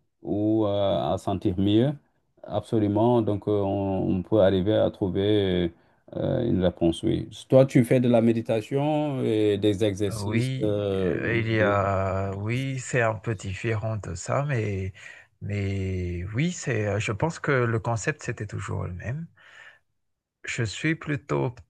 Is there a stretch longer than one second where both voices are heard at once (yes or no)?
yes